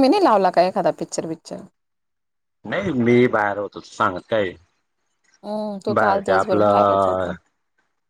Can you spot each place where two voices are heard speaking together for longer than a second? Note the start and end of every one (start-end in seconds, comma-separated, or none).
6.0-7.3